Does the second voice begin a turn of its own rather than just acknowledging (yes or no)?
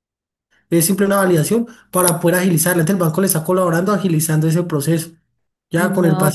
yes